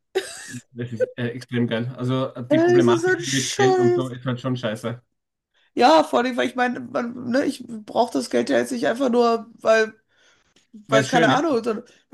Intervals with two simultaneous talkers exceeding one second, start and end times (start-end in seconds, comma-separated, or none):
2.5-4.1